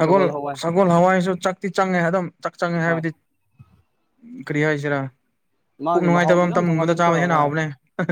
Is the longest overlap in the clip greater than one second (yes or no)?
yes